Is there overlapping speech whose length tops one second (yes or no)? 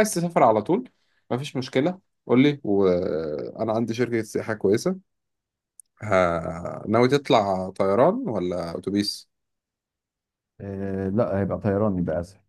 no